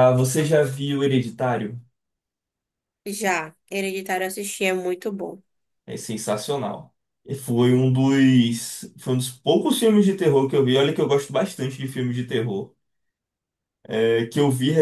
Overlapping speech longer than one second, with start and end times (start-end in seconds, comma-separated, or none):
none